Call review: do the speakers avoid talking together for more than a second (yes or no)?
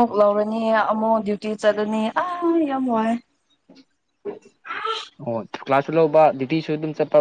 yes